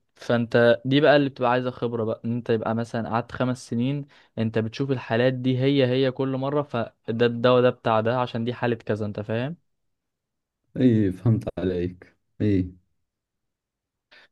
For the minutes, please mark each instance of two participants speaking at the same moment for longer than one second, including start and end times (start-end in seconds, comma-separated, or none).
none